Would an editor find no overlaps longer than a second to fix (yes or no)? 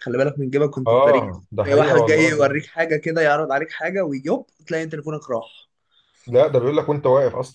no